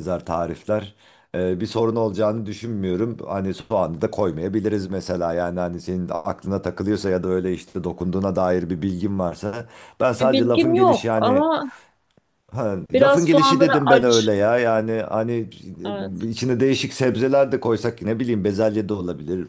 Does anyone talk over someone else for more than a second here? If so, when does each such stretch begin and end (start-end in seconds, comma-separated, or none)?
10.1-11.4, 12.9-14.3